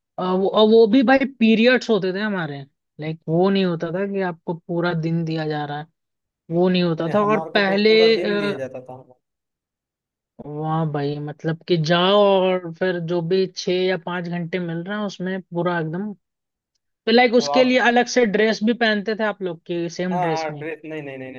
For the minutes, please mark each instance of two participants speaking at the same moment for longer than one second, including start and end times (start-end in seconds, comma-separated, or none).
7.0-8.6